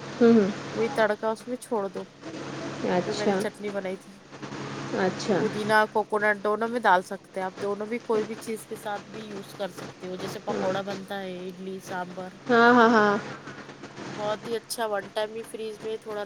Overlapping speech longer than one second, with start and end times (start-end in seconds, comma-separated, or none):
none